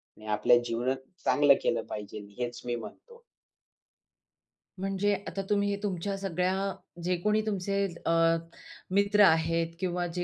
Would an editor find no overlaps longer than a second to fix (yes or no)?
yes